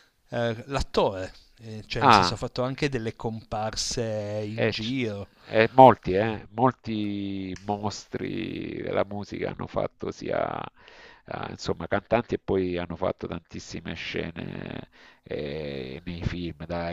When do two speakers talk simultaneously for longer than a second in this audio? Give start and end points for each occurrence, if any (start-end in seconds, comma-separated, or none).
none